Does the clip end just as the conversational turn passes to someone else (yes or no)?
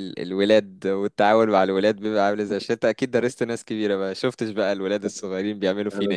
yes